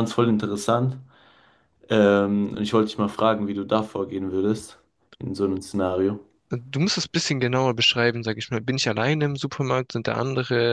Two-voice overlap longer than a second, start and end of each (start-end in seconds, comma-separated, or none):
none